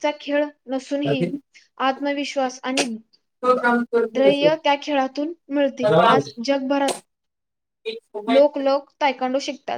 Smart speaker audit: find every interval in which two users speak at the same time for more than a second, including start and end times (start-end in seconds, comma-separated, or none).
none